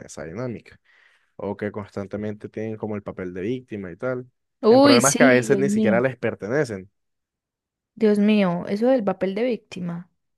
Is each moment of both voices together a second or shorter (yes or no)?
no